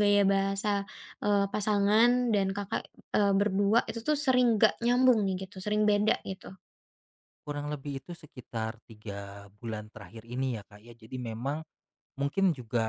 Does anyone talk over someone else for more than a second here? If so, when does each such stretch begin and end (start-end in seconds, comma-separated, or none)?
none